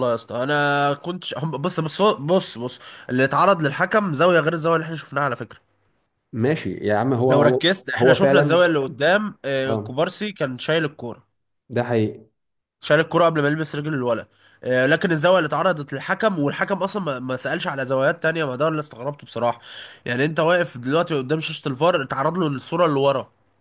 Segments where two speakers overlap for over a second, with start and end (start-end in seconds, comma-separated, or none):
7.3-8.6